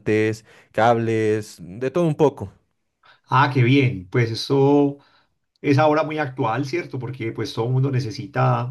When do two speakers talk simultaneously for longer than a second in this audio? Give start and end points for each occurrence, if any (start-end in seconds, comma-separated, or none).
none